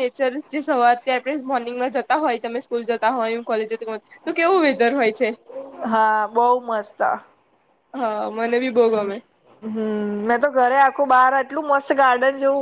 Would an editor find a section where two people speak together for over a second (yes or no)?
no